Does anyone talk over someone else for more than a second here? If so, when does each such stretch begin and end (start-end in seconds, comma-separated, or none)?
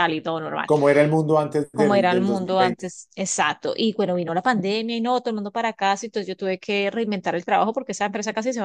1.7-2.9